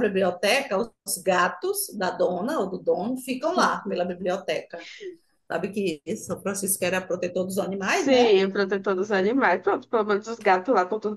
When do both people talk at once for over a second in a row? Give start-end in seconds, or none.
none